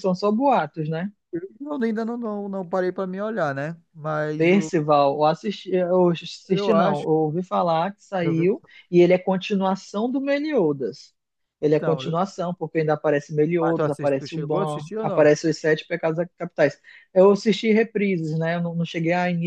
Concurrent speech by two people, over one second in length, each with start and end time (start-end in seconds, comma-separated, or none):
13.6-15.3